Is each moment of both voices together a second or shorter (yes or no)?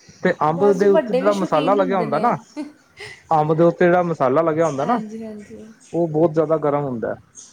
no